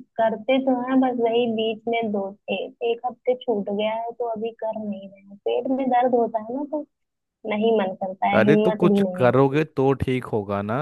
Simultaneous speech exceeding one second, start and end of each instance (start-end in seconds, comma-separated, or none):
8.3-9.6